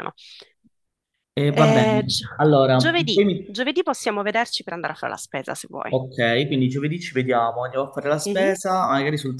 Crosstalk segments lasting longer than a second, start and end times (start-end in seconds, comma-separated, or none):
1.4-3.5